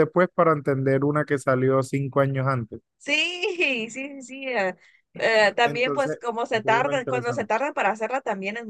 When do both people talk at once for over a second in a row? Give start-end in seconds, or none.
5.6-7.5